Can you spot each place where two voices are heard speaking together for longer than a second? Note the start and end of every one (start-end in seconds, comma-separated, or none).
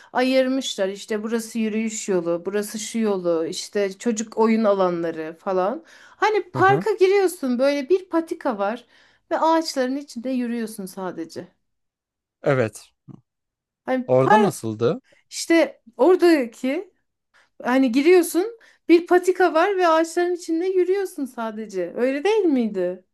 none